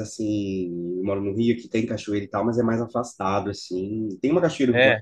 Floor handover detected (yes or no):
no